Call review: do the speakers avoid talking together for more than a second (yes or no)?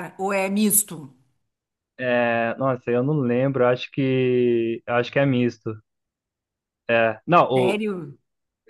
yes